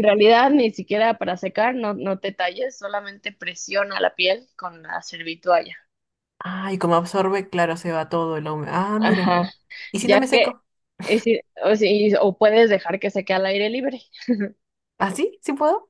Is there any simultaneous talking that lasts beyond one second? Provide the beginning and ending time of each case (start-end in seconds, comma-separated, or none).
none